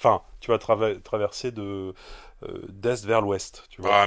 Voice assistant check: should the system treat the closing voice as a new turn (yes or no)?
yes